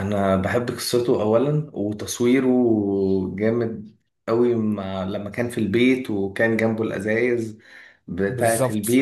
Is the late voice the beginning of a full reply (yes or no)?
no